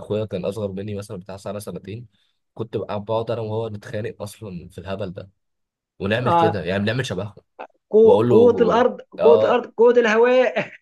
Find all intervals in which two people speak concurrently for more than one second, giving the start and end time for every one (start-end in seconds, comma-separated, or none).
8.0-9.7